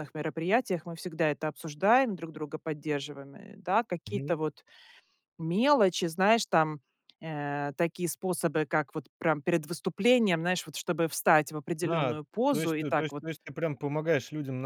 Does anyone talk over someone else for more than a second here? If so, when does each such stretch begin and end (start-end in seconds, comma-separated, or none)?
11.8-13.2